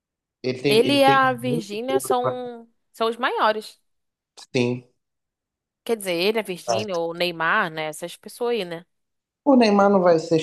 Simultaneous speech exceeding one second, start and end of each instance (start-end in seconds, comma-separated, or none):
0.7-2.4